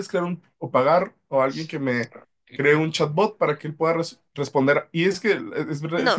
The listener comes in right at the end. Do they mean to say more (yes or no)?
yes